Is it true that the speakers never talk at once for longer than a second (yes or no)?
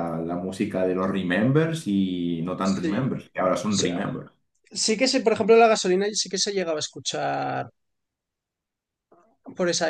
no